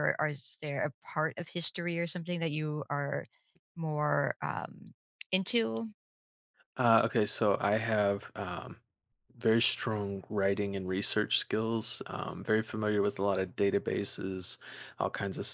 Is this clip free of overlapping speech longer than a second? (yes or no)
yes